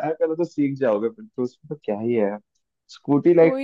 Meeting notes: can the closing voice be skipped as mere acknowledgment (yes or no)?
yes